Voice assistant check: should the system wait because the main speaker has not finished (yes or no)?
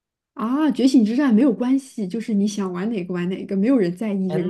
no